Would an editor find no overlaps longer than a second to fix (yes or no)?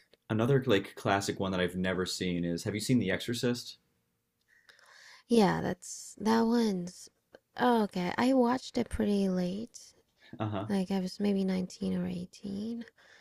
yes